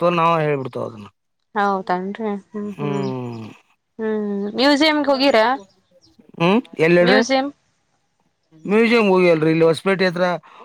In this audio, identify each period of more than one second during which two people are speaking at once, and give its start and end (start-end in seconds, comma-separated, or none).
none